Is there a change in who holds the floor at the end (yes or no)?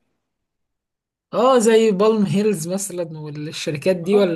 yes